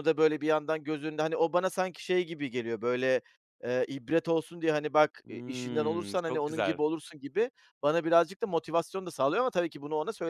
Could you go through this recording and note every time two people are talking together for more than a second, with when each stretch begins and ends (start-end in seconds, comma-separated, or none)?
5.3-6.8